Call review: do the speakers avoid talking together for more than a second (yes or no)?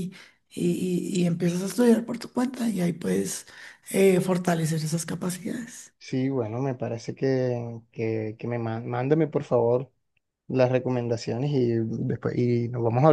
yes